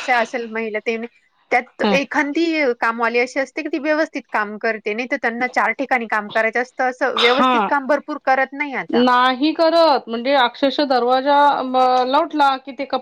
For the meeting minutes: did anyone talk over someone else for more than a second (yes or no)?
no